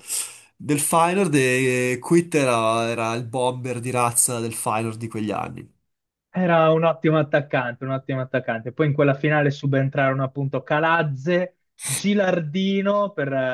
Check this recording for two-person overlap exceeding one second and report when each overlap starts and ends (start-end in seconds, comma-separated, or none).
none